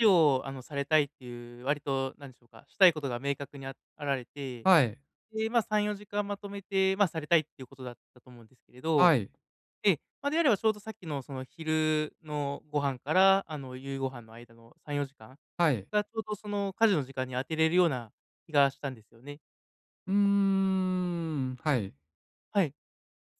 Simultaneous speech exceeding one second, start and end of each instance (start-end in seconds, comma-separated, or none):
none